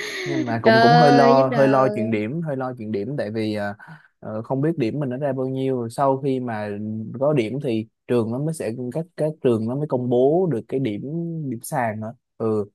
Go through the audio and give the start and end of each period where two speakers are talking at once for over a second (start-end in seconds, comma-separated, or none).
0.6-2.2